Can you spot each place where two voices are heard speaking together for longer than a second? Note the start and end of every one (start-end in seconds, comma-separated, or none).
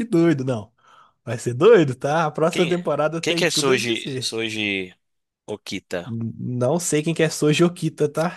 2.5-4.4